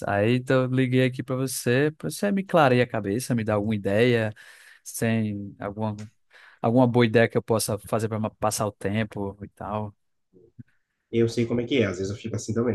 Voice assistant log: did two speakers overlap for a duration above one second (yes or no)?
no